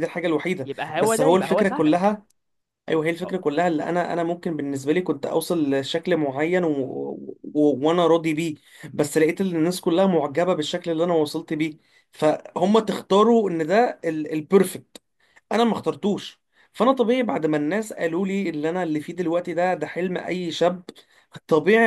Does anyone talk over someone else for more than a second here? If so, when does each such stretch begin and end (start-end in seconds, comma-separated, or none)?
0.7-2.1